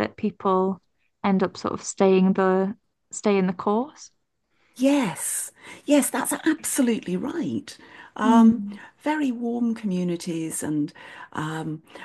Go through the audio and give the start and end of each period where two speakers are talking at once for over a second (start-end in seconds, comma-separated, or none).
none